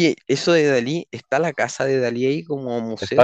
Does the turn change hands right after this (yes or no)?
yes